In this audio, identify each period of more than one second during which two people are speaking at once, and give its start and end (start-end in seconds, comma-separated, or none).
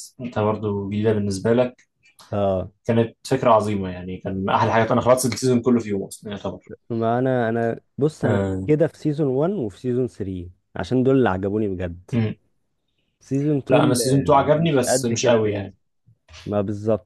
13.7-15.7